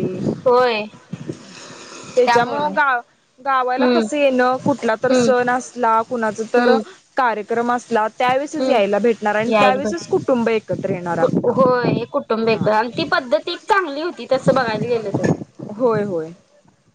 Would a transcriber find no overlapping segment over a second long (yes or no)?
yes